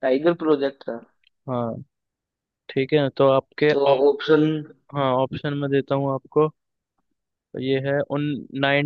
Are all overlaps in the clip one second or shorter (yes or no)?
yes